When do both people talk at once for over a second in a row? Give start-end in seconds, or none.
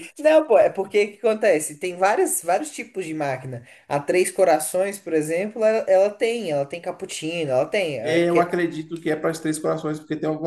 none